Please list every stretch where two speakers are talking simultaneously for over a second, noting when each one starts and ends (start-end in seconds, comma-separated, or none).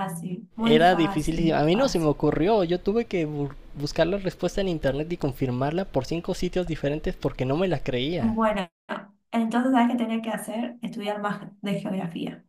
0.6-2.1